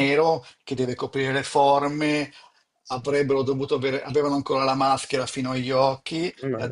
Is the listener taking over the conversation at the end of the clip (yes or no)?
no